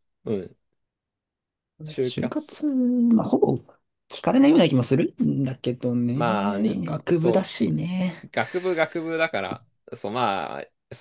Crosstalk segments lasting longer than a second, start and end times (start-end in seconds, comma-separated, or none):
6.1-7.5